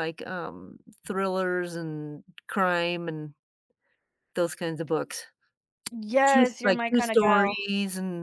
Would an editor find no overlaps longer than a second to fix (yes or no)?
no